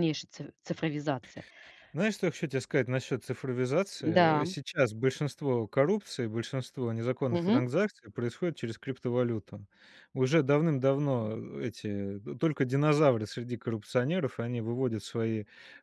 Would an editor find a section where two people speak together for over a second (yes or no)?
no